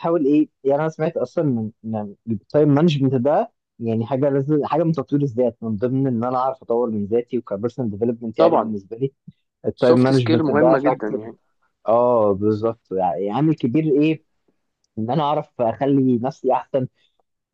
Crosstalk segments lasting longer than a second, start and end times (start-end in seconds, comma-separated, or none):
9.8-11.3